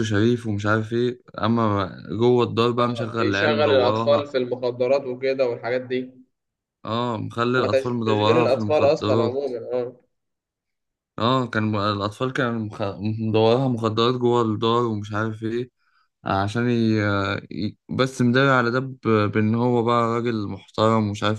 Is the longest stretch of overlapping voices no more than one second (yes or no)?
no